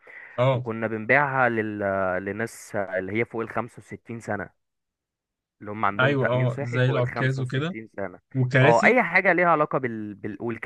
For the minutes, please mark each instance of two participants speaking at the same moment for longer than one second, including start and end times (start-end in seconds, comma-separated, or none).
6.0-7.8